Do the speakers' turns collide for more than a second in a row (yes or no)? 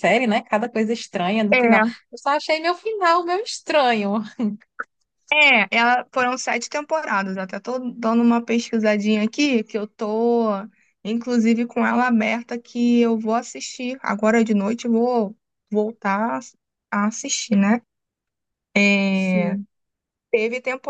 no